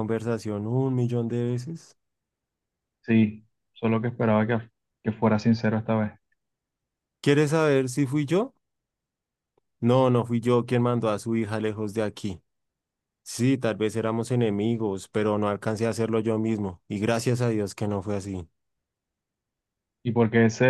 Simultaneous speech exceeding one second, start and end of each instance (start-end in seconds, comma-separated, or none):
none